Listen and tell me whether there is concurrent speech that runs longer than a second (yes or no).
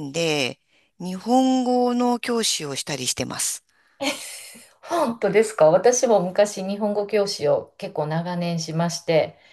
no